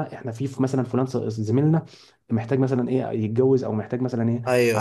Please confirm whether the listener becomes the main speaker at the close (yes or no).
no